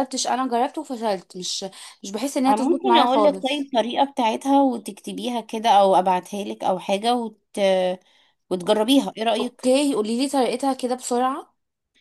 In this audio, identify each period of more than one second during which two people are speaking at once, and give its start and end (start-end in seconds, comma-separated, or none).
2.5-3.7